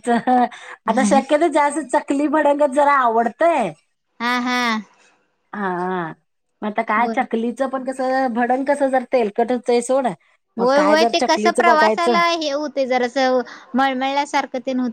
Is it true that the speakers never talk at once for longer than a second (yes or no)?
no